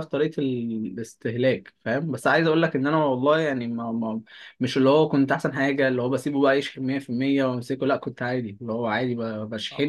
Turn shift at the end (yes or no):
yes